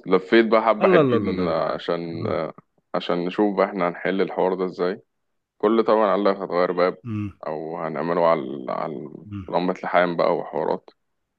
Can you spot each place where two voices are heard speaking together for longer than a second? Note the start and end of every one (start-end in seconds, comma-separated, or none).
0.8-2.4